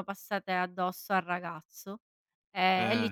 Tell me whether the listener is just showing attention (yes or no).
yes